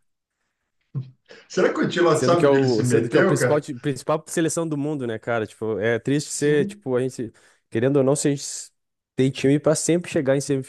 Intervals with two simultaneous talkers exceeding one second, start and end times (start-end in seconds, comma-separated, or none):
2.1-3.7